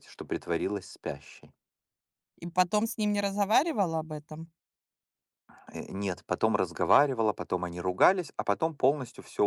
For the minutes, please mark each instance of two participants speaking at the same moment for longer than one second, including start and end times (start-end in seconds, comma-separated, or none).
none